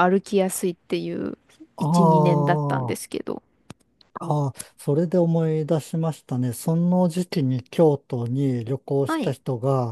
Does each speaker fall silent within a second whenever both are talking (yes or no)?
no